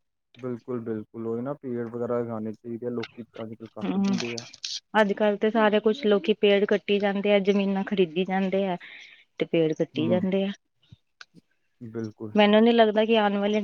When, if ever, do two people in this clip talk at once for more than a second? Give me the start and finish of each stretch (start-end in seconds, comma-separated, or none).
none